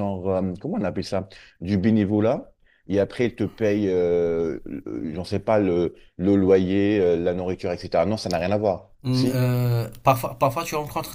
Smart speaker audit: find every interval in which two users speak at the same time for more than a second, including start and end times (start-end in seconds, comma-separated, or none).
none